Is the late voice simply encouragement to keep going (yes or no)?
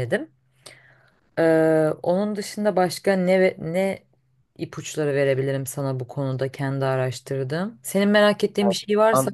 no